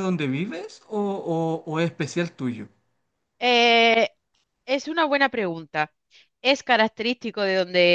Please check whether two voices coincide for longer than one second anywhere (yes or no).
no